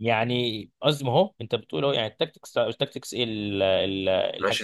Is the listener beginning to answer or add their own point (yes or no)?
yes